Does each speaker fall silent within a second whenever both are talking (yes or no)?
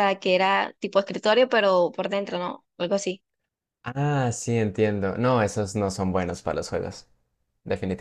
yes